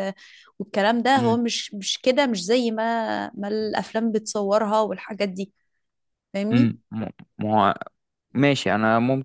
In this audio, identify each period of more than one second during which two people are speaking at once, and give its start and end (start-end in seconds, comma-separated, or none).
none